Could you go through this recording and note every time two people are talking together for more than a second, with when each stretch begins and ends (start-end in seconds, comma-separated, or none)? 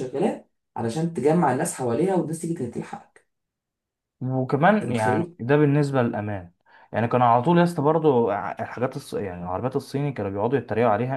none